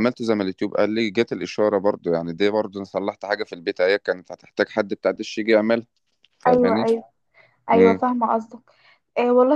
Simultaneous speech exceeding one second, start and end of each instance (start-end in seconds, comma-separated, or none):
none